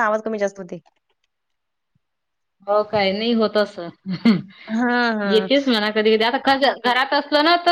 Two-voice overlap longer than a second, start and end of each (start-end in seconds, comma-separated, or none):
none